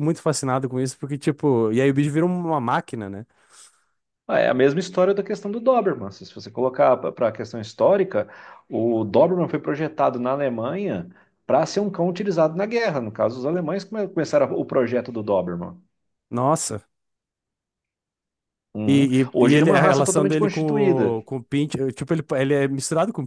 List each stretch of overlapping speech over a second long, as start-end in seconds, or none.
18.9-20.6